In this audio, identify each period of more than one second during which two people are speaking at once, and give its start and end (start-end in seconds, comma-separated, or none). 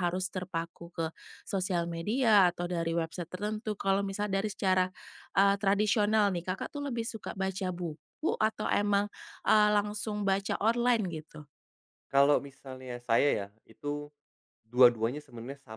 none